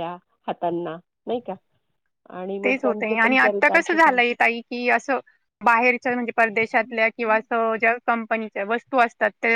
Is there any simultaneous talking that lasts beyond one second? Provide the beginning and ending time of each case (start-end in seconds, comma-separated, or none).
2.6-4.3